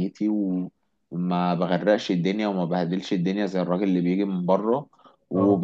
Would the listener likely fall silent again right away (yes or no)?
yes